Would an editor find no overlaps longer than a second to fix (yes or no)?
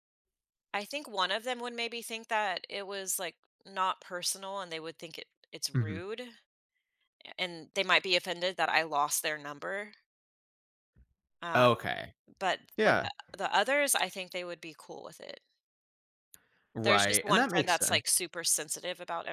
no